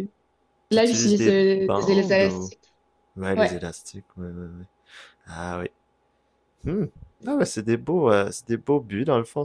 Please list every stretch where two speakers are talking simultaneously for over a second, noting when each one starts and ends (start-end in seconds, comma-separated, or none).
0.7-2.5